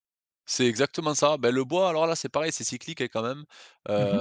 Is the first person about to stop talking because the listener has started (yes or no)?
no